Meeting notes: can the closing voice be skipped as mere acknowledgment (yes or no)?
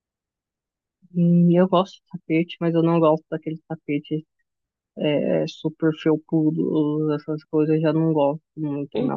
yes